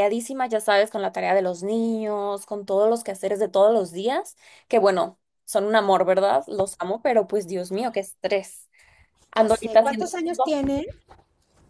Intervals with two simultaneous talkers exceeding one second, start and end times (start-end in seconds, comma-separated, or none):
9.3-10.6